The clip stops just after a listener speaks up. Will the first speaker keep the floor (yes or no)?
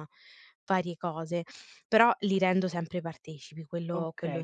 no